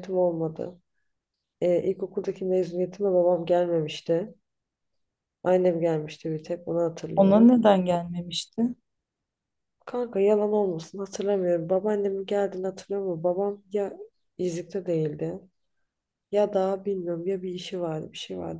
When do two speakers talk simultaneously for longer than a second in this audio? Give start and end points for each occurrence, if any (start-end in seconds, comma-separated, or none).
none